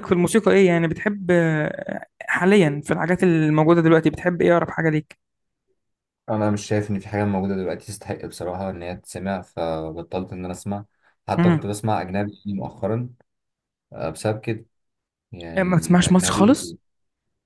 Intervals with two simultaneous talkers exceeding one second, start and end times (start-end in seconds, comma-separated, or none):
15.6-16.8